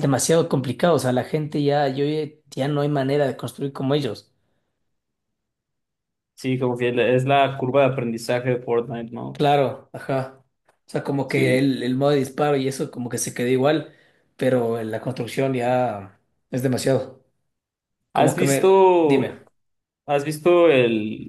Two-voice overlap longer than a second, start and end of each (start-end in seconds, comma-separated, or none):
18.1-19.4